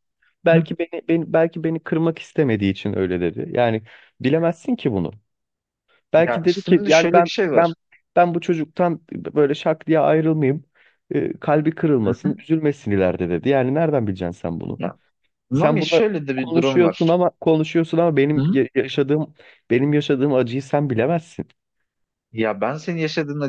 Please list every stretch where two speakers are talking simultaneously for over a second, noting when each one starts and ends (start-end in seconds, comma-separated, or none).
6.2-7.7, 15.5-17.2